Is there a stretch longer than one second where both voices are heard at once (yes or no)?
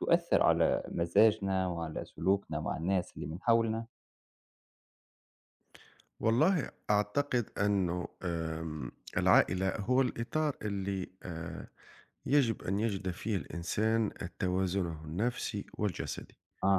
no